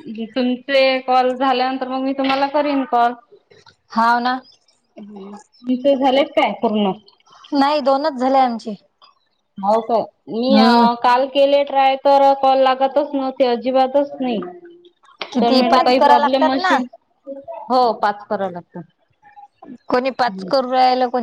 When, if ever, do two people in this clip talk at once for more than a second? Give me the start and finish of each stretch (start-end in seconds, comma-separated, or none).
15.4-16.8